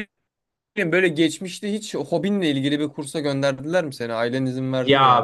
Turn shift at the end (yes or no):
yes